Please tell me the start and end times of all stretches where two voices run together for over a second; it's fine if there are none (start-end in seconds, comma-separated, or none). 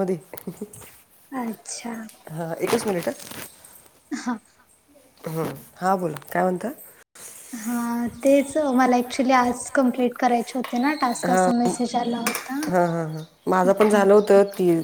none